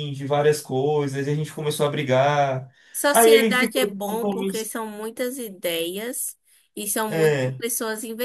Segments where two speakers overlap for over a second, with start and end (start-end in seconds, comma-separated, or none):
3.1-4.8